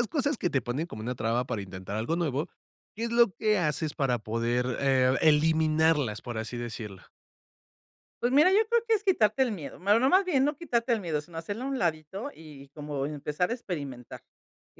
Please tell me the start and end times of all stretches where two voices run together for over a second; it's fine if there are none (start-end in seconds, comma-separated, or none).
none